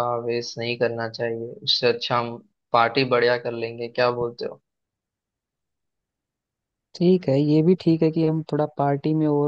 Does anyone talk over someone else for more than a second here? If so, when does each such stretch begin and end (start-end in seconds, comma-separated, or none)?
none